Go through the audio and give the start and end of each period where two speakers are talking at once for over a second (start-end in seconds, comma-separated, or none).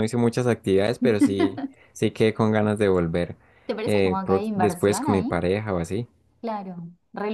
3.9-5.4